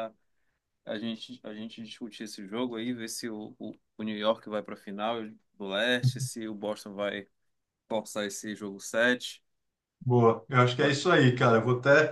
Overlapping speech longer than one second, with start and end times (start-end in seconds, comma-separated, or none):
none